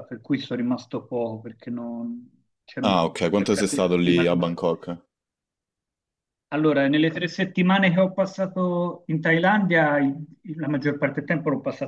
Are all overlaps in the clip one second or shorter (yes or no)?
no